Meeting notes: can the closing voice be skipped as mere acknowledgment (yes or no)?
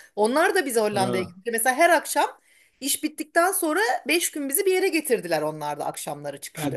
no